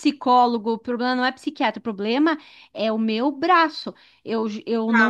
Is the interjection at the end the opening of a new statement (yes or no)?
no